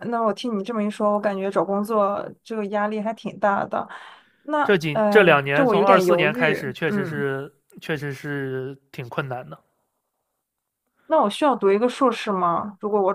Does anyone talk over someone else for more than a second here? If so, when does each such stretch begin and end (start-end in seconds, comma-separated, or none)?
4.6-7.3